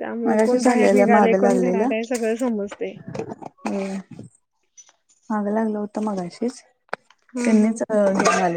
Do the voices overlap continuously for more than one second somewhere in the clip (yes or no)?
no